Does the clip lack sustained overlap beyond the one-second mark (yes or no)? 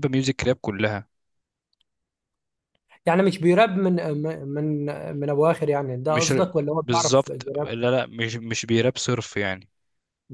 no